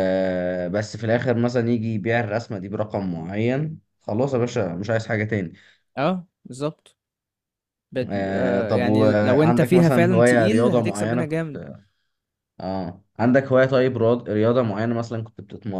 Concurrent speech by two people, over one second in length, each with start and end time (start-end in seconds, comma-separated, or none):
8.0-11.3